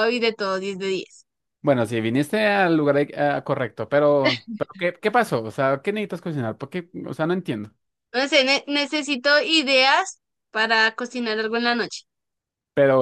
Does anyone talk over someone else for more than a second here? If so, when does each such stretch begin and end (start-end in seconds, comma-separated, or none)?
none